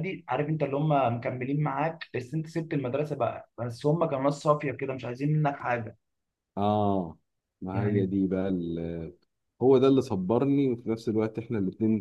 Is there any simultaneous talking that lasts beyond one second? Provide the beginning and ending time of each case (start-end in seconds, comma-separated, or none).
none